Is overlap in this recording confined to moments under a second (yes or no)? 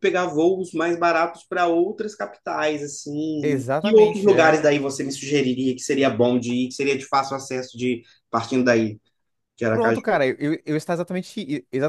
no